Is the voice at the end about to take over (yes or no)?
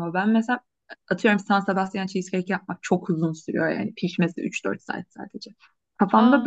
no